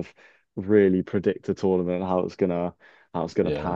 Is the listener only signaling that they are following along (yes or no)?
yes